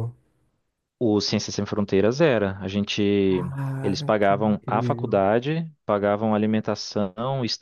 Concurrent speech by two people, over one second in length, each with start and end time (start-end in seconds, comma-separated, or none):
3.8-5.2